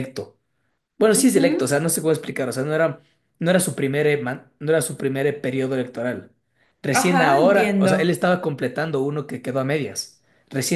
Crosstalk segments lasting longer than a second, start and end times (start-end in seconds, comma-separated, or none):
6.9-8.2